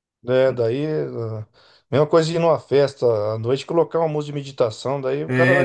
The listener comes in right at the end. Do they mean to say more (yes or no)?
yes